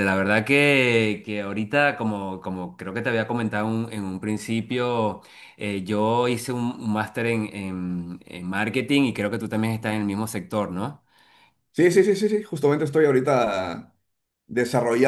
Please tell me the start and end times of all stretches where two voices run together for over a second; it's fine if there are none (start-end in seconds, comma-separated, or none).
none